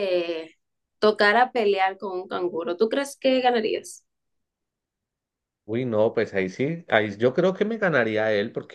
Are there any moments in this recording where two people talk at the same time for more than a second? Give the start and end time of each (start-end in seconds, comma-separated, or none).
none